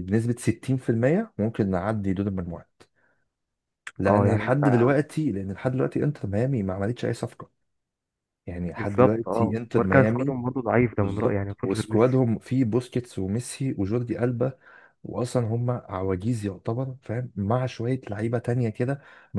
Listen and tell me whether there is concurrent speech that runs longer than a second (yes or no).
yes